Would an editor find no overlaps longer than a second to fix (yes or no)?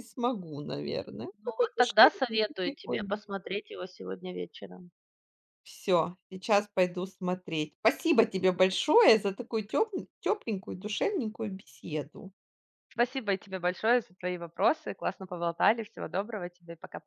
no